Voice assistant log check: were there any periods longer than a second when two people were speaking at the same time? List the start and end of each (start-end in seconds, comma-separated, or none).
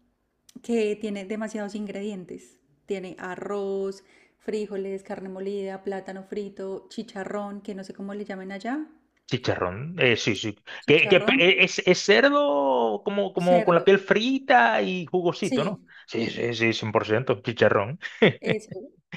none